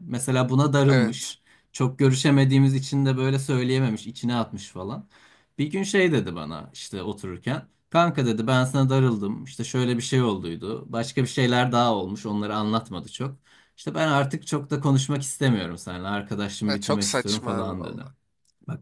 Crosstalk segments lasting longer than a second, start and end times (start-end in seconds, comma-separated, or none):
16.6-18.0